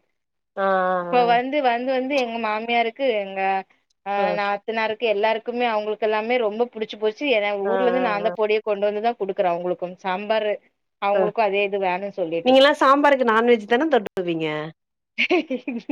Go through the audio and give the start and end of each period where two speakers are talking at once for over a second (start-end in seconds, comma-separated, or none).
none